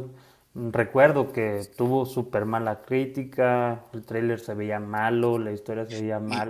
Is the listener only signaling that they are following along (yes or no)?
no